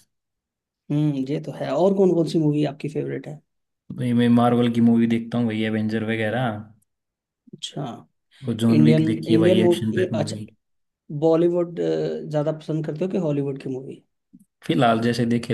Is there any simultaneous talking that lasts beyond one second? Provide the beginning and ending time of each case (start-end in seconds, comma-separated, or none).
8.8-10.4